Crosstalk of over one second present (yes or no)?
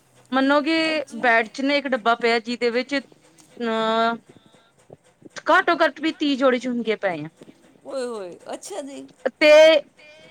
yes